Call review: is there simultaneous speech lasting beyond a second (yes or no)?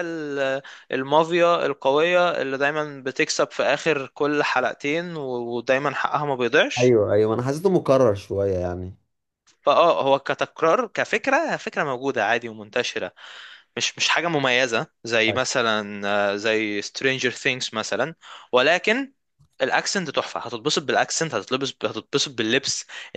no